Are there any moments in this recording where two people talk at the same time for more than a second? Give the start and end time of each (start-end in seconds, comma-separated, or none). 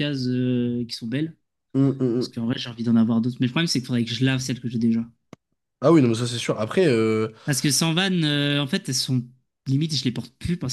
none